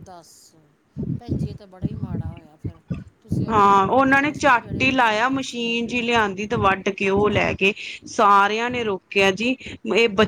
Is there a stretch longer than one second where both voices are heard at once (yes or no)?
yes